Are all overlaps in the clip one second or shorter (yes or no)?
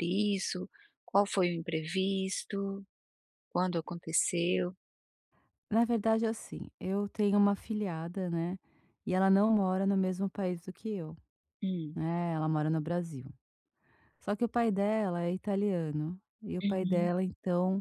yes